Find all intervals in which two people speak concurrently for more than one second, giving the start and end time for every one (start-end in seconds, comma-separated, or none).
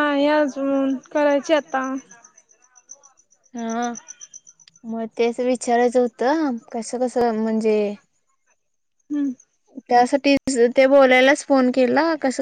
none